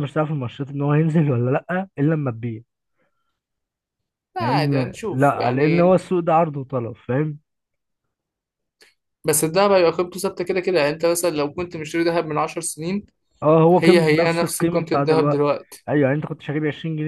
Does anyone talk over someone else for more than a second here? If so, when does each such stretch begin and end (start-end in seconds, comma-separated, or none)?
4.4-5.9, 13.7-15.4